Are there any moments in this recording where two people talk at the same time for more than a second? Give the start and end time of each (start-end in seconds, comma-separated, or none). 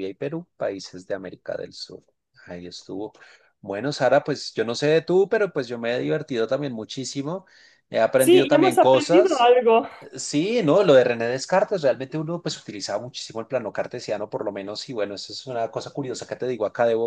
8.2-9.5